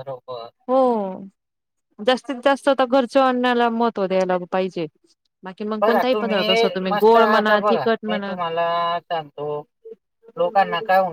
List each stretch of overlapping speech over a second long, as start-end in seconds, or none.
none